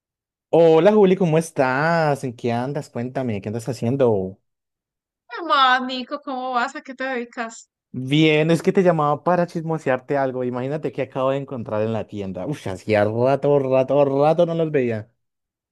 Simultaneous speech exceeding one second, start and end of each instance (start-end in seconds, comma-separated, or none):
none